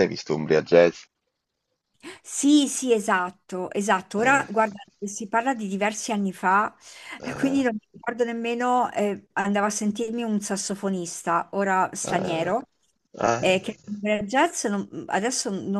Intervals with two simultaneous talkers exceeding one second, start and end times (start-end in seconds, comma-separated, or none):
none